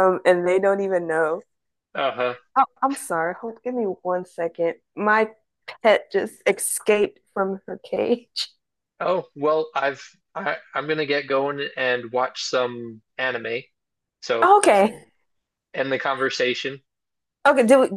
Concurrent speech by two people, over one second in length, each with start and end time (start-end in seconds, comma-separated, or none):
none